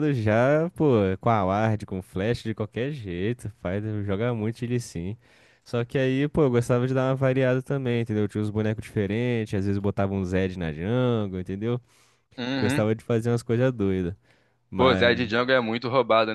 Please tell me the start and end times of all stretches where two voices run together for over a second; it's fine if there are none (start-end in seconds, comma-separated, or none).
none